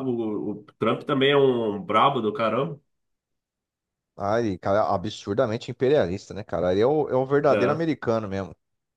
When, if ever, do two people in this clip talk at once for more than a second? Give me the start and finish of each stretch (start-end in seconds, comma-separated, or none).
none